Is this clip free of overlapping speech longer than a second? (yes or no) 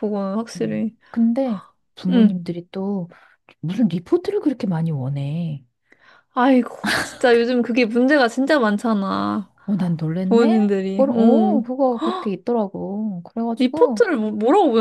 no